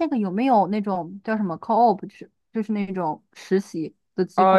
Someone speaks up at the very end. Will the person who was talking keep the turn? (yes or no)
no